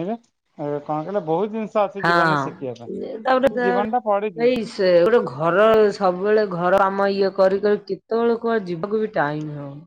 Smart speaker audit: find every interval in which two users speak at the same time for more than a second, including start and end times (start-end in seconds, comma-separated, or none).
2.0-3.7